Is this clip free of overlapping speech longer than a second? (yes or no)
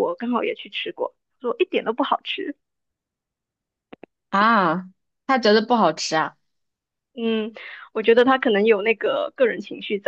yes